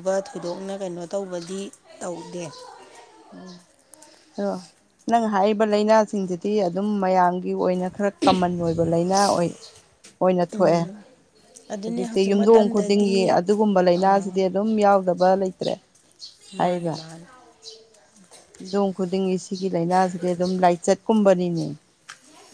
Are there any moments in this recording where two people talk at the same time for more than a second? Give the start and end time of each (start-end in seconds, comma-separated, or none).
11.8-13.2